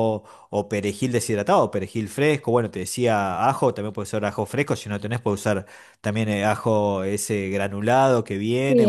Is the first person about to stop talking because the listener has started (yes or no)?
yes